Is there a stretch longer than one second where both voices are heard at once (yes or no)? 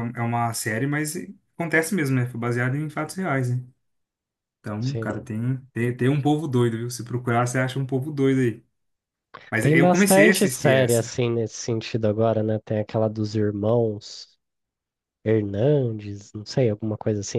yes